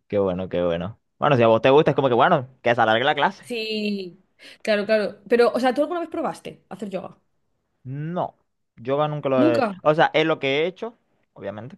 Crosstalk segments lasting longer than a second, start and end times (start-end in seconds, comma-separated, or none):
none